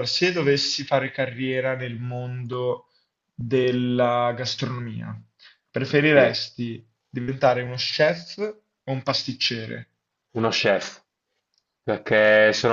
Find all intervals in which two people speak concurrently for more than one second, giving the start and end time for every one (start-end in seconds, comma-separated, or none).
none